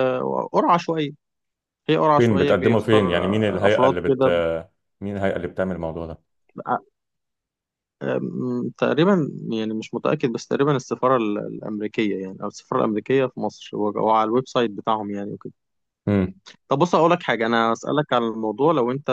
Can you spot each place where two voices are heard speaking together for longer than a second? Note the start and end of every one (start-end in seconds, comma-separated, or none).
2.2-4.3